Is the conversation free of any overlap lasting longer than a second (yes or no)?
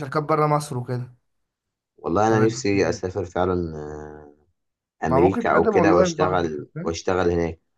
no